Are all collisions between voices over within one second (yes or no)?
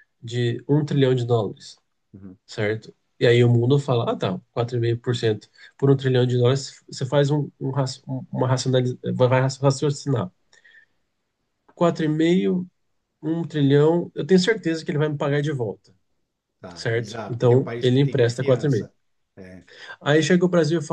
no